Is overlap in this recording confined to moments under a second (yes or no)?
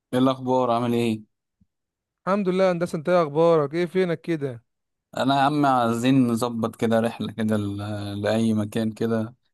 yes